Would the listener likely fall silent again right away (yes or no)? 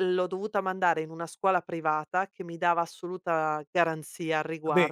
yes